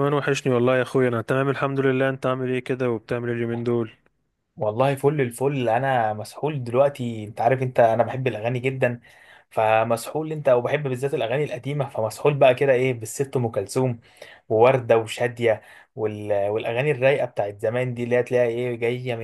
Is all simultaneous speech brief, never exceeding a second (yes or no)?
yes